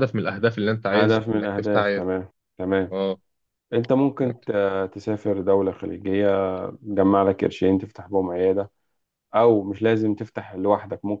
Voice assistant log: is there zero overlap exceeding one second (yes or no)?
no